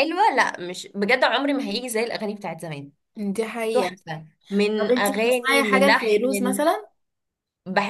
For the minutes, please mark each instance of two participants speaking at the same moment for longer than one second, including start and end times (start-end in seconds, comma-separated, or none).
4.8-6.6